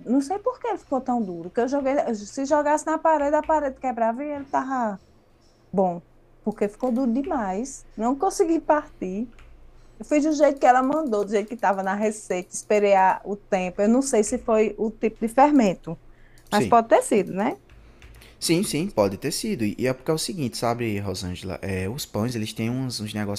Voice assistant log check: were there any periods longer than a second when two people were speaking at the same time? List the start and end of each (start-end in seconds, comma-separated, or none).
none